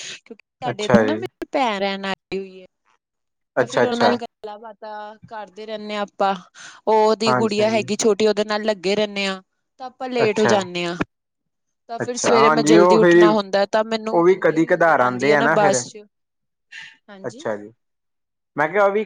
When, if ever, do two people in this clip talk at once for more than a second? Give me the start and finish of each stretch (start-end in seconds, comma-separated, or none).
14.1-15.8